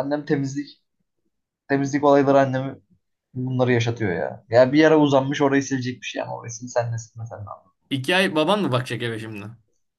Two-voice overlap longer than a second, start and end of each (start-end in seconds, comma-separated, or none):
none